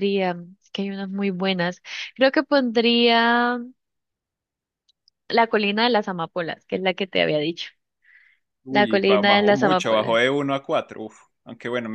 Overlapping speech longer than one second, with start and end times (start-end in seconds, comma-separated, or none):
8.7-10.2